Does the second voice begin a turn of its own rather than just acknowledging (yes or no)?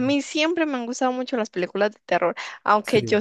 no